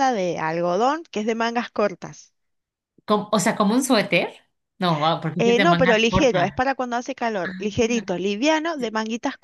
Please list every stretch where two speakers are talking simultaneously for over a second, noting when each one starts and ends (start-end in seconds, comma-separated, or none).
5.4-6.7